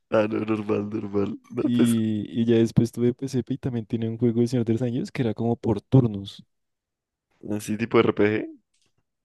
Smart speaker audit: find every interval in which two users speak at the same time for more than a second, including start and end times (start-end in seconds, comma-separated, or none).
none